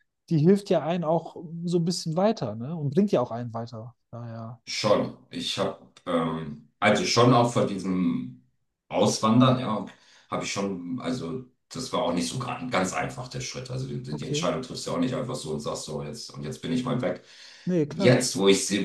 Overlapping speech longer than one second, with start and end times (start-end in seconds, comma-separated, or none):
none